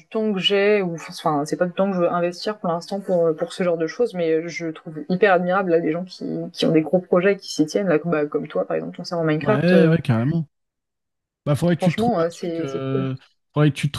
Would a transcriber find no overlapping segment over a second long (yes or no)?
no